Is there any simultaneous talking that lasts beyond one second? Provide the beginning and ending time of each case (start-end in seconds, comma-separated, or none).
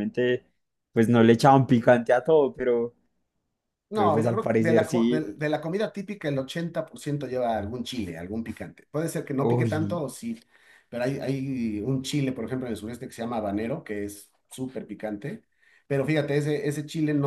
3.9-5.2